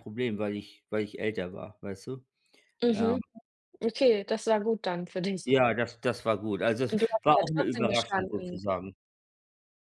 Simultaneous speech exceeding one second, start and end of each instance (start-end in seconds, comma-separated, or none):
6.9-8.6